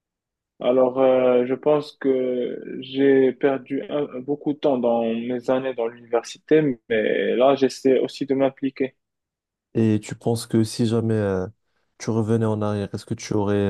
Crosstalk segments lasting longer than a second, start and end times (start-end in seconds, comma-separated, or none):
none